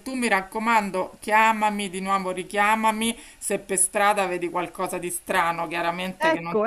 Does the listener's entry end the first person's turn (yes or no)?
no